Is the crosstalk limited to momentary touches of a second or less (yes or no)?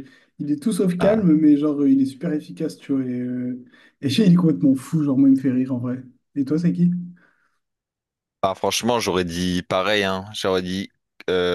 yes